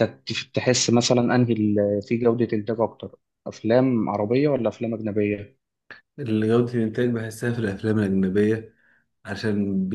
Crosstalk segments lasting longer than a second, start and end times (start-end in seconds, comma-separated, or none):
none